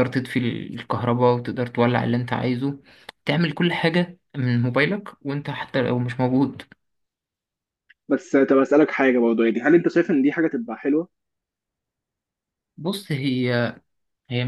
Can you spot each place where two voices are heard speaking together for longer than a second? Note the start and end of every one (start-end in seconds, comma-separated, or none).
none